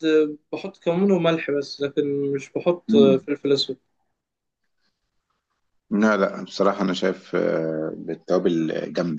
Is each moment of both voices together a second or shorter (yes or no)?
yes